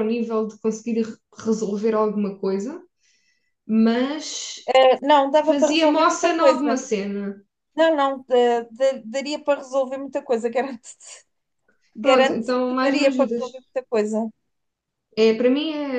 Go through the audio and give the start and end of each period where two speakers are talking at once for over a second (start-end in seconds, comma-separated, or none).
5.4-6.8, 12.0-13.4